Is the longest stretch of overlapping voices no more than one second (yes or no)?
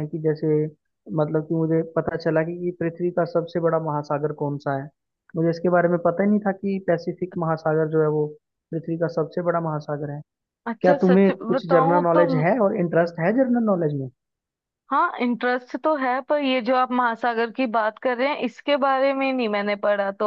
no